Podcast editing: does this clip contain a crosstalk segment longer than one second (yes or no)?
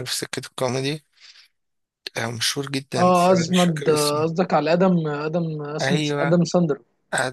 yes